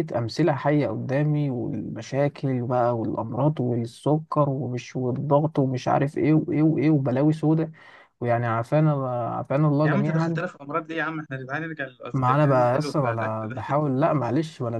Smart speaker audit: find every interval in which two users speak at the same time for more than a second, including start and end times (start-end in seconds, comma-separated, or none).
12.3-13.8